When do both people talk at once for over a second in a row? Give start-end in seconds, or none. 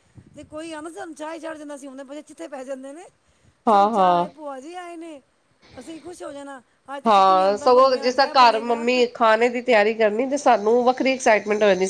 7.1-8.8